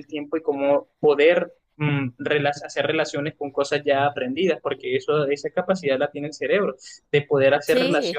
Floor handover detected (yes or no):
no